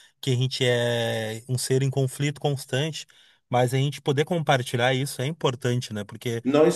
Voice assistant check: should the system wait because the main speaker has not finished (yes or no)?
no